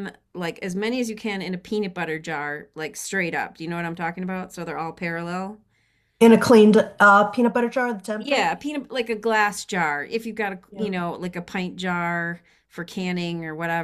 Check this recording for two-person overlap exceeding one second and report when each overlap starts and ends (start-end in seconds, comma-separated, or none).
none